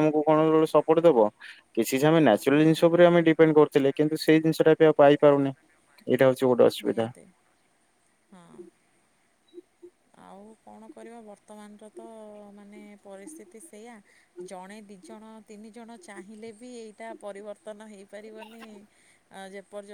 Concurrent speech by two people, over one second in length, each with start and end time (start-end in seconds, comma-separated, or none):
none